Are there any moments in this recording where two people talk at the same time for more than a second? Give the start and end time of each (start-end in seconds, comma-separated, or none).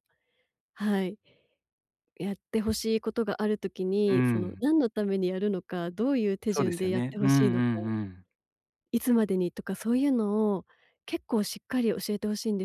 6.5-7.7